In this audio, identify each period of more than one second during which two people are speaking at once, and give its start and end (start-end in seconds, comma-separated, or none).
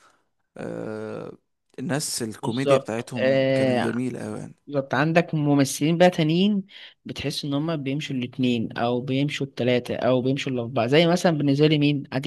2.4-4.0